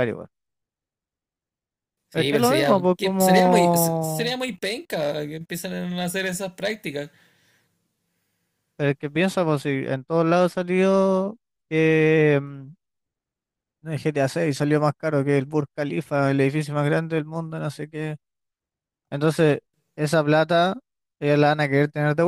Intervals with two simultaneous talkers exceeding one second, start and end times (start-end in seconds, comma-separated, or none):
2.1-4.4